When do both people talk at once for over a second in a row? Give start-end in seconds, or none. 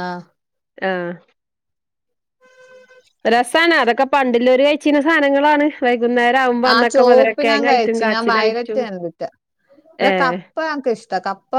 6.7-8.8